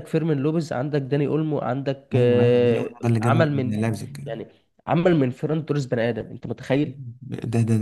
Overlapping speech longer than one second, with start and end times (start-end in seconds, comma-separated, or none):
2.1-3.8